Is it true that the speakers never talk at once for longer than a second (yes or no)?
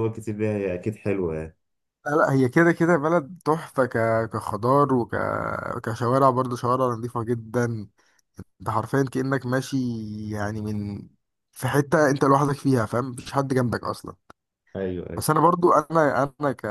yes